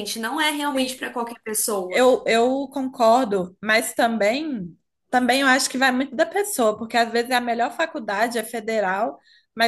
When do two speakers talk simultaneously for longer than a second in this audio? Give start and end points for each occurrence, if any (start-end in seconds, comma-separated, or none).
none